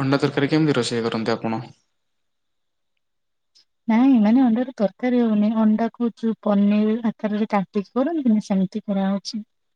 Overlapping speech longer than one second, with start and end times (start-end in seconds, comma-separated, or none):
none